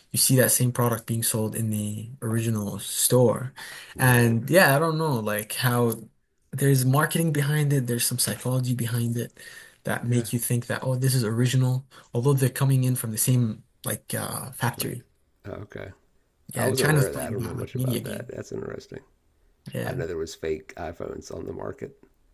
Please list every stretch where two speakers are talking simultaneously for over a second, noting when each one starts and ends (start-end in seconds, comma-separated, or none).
16.6-18.3